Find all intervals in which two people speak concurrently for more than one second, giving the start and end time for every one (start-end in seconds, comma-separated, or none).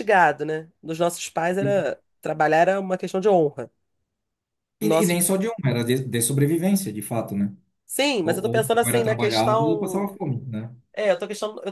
8.2-10.1